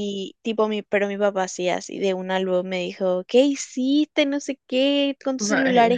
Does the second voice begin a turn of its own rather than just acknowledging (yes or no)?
no